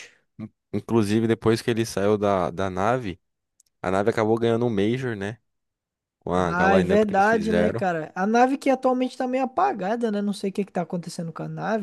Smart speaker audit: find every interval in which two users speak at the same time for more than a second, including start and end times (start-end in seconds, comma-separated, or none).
6.3-7.8